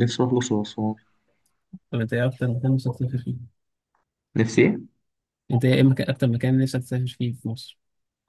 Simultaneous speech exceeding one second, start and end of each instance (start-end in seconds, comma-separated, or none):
none